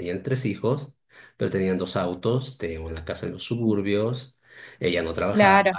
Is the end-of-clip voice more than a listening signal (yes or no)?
no